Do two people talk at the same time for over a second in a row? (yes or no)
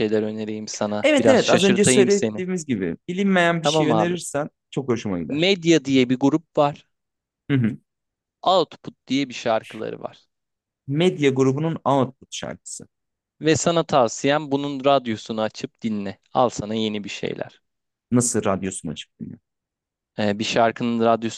yes